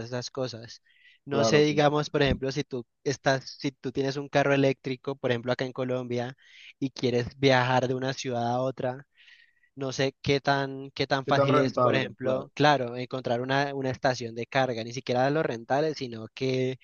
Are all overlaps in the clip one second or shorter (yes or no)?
no